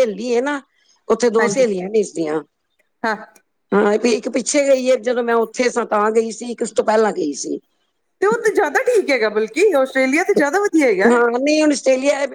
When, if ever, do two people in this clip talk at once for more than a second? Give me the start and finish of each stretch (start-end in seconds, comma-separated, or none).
none